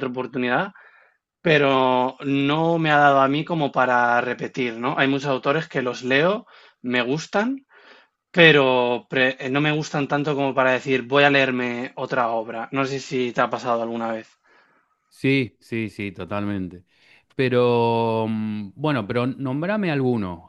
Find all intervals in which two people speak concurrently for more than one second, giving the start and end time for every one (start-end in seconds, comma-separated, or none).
none